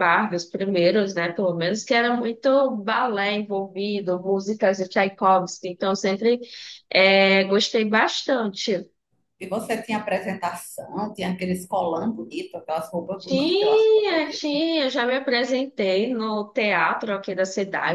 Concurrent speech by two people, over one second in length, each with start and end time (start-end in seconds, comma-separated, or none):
13.2-14.6